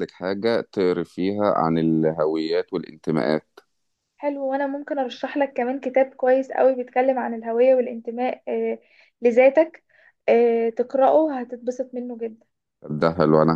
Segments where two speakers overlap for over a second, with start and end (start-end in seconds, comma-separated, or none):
none